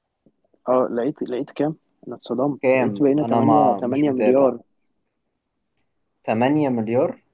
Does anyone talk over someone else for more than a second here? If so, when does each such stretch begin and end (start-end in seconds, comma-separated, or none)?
2.6-4.5